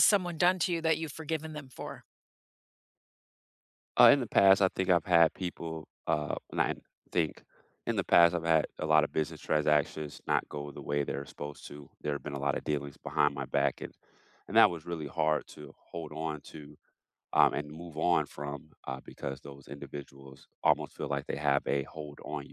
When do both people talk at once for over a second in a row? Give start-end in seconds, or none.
none